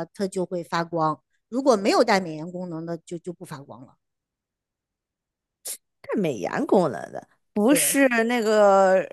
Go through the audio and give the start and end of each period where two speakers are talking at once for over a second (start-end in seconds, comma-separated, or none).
none